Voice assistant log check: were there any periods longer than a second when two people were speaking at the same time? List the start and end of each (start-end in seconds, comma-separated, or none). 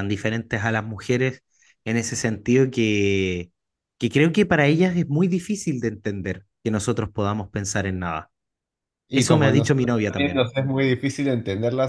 9.1-10.5